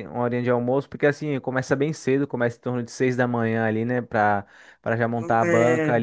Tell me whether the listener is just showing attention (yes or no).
yes